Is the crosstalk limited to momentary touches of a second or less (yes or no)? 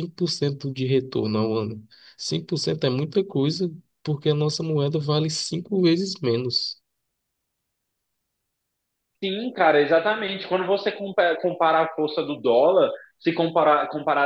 yes